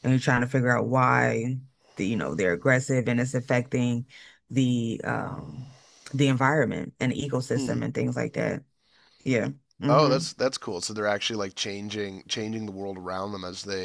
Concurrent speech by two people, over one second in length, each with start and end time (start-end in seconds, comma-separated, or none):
none